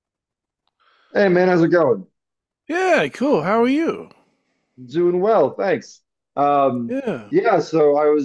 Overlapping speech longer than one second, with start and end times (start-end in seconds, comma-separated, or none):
none